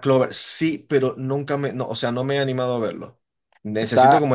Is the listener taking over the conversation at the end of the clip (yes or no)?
no